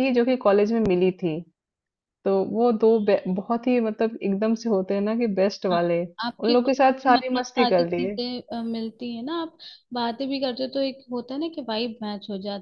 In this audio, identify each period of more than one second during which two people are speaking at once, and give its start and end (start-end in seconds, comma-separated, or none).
6.4-8.2